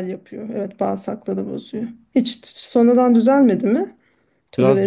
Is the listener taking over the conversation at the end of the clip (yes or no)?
yes